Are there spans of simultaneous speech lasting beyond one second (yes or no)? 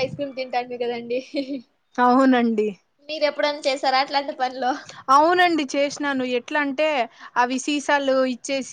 no